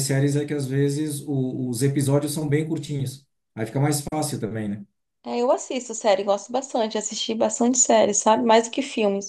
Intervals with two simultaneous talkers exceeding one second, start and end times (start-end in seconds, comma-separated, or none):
none